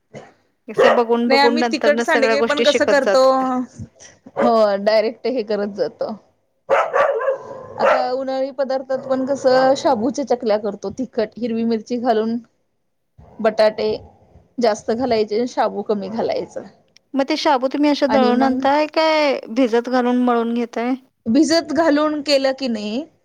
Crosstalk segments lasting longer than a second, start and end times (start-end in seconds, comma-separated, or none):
1.3-3.2